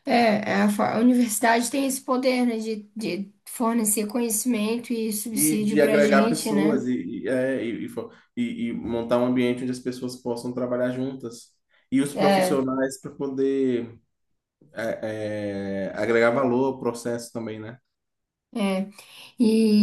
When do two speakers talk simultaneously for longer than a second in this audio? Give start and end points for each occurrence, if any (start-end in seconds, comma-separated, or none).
5.3-6.8